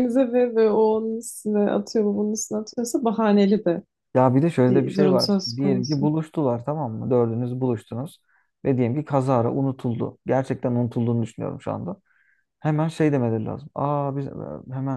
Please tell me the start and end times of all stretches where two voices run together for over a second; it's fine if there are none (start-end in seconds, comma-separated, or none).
4.7-6.1